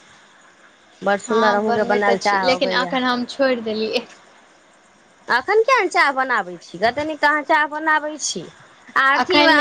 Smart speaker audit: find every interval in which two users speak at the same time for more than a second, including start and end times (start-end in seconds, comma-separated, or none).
1.3-2.9